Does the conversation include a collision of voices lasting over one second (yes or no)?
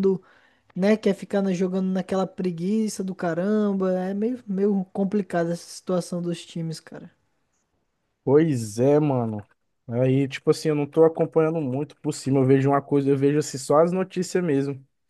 no